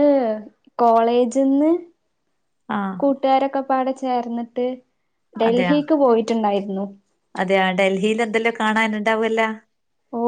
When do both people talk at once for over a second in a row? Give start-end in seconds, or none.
none